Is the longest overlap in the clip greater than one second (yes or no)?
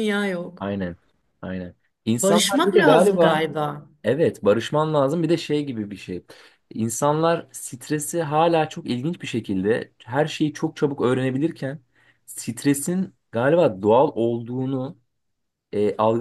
yes